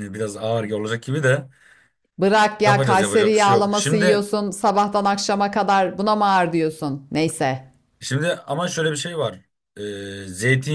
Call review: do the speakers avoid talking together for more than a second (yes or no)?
no